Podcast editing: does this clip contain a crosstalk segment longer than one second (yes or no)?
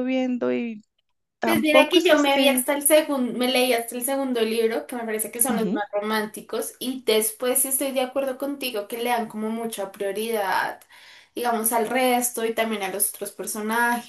yes